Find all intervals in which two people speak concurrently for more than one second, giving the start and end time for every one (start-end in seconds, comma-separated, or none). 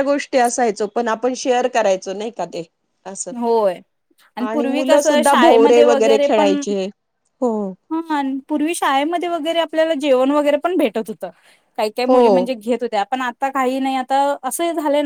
none